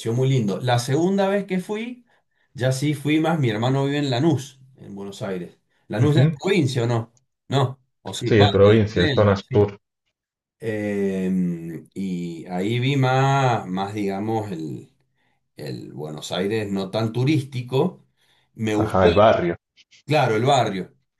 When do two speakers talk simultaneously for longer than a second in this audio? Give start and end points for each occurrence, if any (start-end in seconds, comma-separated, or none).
8.2-9.7